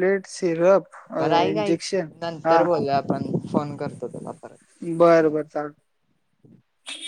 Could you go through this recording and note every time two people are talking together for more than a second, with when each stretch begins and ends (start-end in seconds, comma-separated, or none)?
none